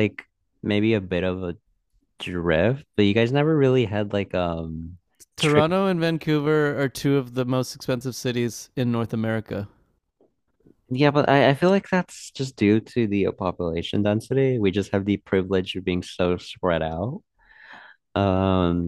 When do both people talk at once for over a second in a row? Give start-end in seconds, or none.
none